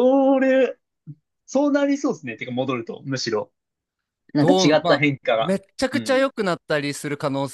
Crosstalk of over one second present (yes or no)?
yes